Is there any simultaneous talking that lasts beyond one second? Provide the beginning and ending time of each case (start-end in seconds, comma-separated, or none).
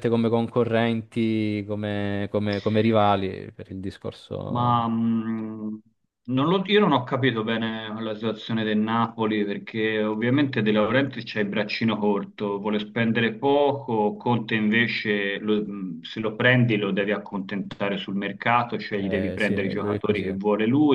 18.9-20.3